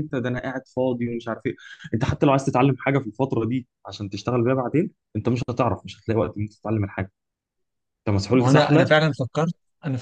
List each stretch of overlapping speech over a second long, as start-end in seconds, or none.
none